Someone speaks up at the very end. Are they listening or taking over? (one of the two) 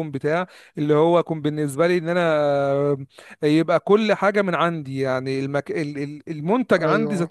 listening